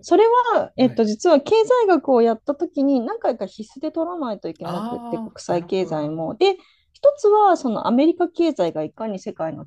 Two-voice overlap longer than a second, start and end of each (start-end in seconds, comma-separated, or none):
4.6-6.2